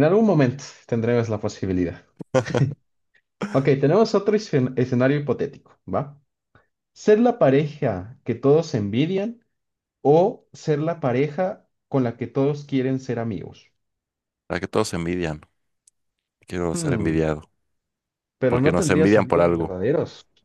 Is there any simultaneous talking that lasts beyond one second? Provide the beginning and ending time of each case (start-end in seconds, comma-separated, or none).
18.4-19.7